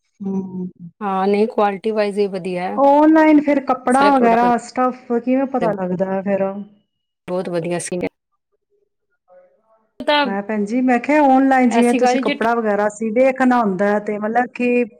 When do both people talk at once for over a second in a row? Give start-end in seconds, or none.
none